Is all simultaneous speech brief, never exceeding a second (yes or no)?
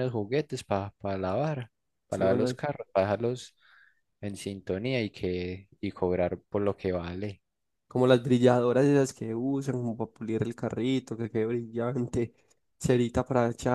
yes